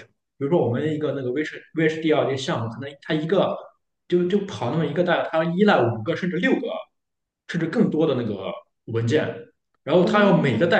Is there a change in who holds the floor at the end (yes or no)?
no